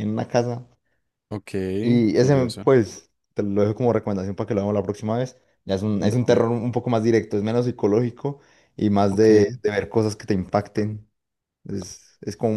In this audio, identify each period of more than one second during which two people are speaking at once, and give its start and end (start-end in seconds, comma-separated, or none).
none